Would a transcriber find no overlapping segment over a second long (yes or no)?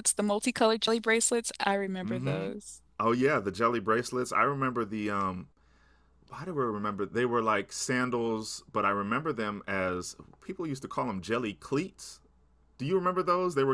yes